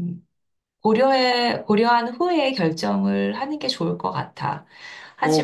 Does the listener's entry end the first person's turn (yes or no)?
yes